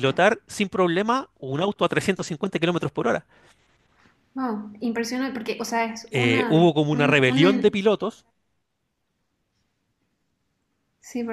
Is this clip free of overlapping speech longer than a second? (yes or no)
no